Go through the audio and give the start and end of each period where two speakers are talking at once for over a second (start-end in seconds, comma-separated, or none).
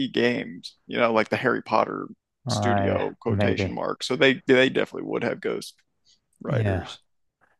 2.5-3.8